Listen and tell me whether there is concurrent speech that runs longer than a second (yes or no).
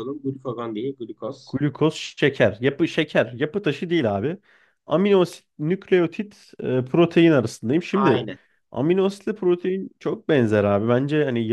no